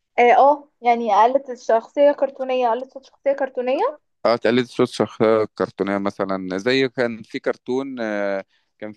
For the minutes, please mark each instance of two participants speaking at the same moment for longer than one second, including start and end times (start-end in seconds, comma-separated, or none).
none